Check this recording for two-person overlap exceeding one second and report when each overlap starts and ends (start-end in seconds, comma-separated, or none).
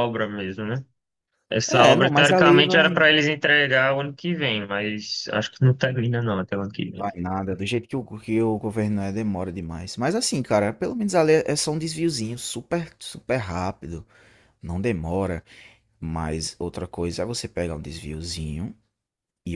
1.7-3.0